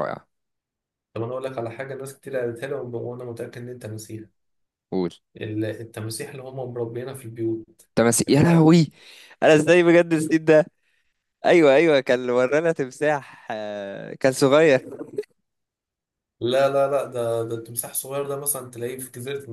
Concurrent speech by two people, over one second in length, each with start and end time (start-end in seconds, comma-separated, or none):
none